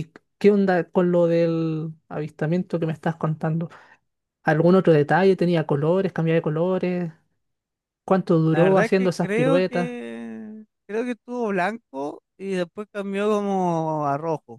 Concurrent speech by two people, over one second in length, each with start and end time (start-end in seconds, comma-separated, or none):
8.5-9.9